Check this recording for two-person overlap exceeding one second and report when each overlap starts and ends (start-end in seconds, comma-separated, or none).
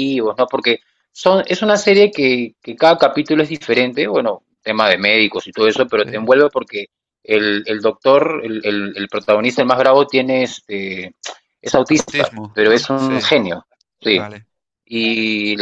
11.9-13.3